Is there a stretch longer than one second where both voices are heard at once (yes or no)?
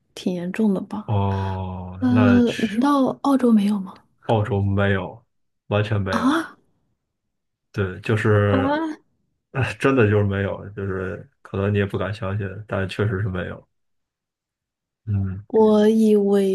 no